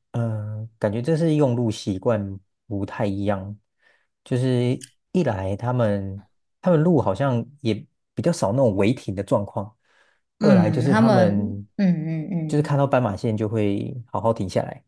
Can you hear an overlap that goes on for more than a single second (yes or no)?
yes